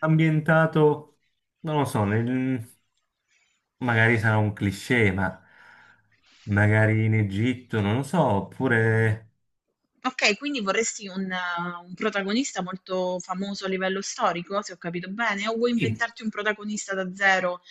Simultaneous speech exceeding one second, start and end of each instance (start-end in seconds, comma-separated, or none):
none